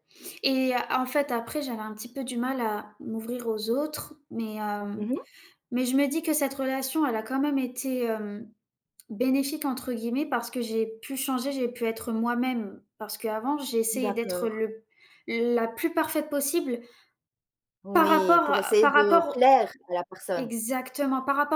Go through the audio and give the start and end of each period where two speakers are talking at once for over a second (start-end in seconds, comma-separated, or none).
17.9-19.5